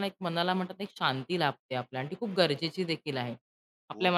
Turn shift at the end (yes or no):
no